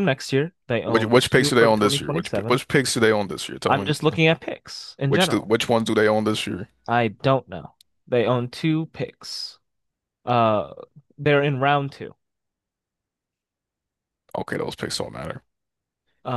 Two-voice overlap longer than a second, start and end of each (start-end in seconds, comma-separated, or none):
0.8-2.6